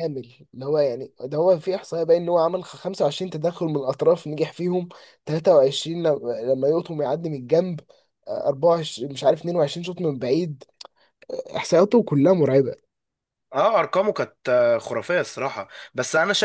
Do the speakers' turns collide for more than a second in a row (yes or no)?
no